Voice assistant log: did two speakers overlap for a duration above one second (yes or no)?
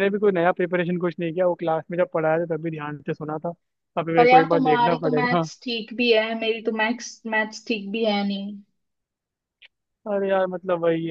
yes